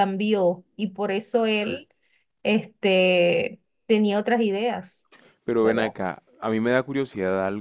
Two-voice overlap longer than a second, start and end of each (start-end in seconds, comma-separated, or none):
none